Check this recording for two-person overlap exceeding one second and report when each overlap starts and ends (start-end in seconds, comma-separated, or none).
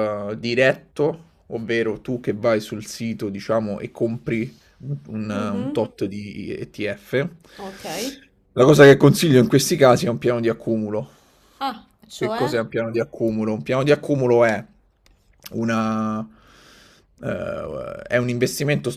none